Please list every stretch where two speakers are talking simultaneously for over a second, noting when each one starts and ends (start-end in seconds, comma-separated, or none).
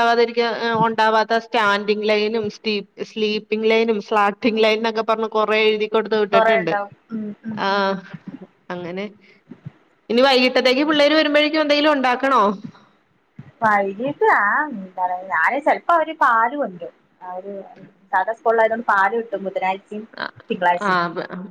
none